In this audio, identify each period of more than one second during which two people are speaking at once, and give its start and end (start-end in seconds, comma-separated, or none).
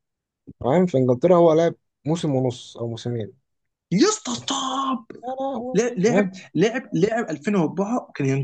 none